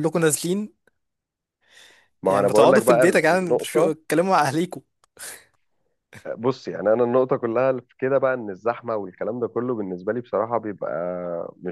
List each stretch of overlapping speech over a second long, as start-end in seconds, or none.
2.2-3.9